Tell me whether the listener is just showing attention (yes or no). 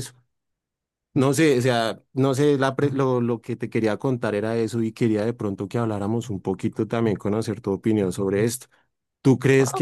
yes